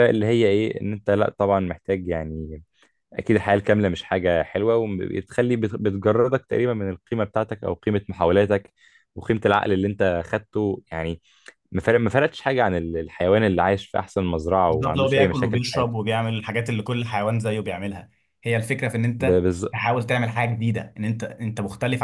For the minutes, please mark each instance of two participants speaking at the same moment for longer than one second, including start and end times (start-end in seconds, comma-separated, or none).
14.7-16.1